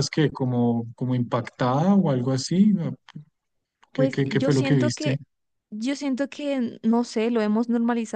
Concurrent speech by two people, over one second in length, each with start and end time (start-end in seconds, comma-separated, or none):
3.9-5.2